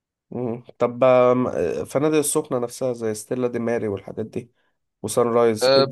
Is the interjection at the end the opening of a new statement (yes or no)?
yes